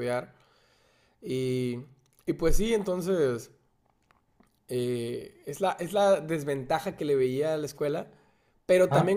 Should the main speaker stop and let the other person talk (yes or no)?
no